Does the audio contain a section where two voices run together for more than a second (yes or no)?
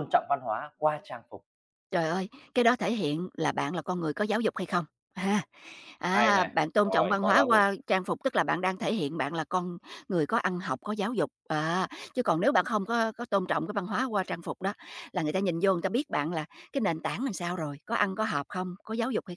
yes